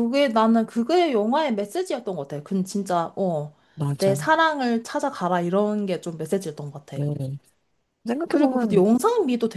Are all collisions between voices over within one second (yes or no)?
yes